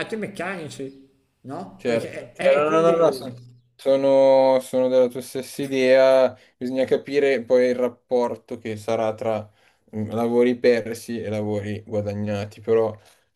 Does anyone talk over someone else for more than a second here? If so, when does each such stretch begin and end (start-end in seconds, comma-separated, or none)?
1.8-3.3